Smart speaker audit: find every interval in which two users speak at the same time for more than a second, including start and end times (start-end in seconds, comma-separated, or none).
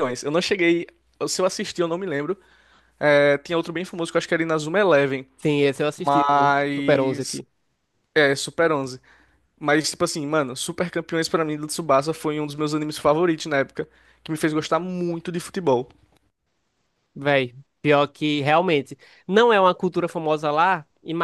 6.0-7.4